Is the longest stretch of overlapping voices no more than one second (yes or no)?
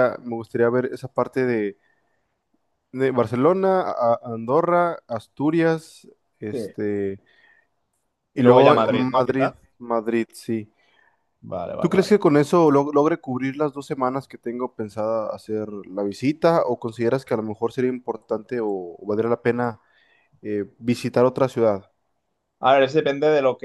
no